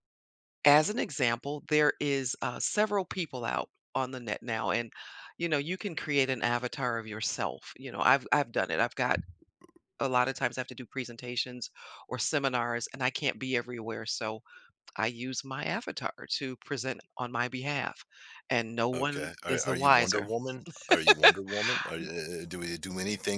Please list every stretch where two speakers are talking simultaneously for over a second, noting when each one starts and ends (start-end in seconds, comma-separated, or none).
18.9-20.3